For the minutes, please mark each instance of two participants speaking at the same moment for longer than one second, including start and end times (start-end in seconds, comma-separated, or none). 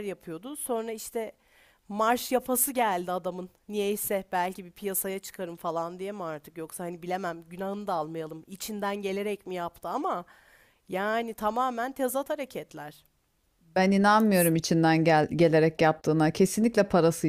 none